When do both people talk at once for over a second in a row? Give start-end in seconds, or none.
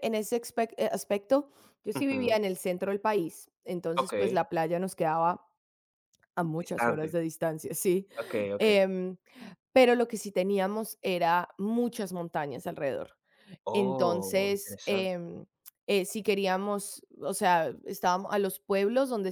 13.7-15.1